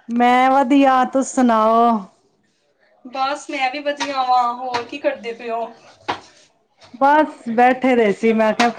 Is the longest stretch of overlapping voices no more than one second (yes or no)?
yes